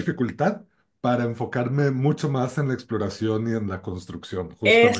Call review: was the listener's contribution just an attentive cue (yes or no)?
no